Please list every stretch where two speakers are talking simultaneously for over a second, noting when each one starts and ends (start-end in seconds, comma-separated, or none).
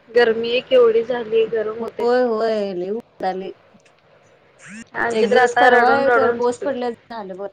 5.2-6.7